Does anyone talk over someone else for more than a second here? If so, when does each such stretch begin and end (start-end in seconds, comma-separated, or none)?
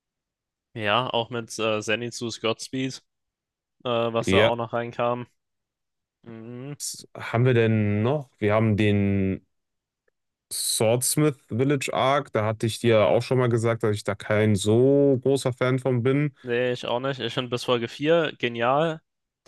none